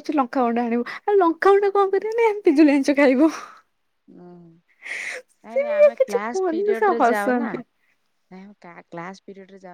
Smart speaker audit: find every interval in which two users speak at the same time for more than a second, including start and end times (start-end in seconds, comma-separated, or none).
5.5-7.5